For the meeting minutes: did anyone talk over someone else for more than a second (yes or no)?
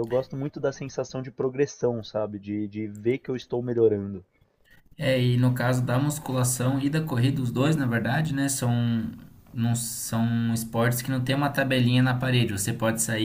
no